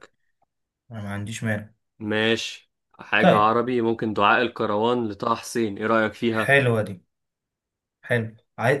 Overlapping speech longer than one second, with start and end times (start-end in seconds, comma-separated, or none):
none